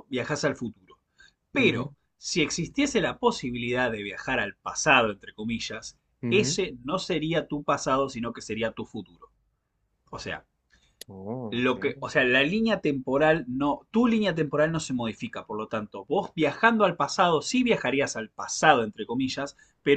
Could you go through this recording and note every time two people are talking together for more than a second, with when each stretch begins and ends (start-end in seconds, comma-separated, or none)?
none